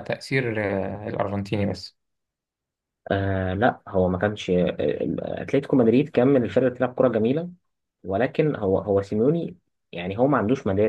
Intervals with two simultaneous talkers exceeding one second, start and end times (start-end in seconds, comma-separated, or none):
none